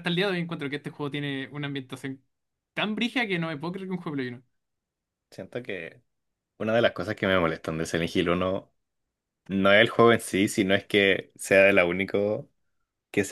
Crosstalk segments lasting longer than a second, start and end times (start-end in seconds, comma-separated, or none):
none